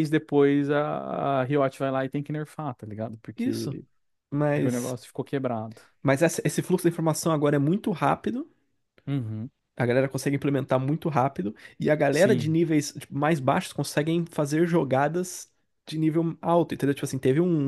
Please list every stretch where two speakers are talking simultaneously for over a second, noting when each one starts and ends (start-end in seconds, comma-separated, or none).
none